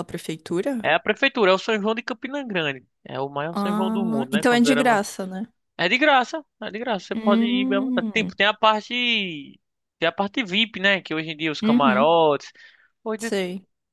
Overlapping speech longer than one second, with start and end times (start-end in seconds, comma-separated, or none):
3.5-5.0, 7.1-8.3